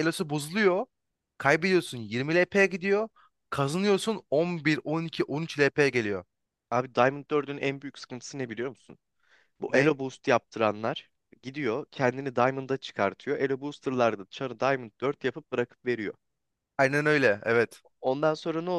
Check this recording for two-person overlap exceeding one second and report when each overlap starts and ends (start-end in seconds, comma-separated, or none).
none